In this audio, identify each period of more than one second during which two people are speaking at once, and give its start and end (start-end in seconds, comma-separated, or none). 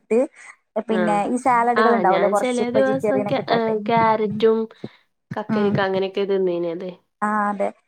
1.9-3.4